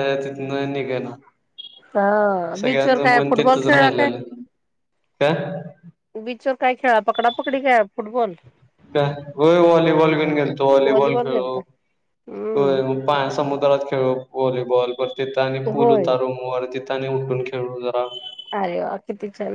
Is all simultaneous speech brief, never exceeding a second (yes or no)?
no